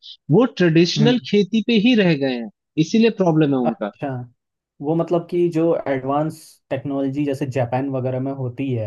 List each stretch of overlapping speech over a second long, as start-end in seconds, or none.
none